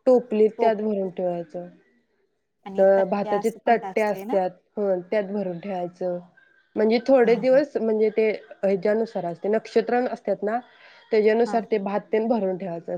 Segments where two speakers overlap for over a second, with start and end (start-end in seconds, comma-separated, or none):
2.8-4.4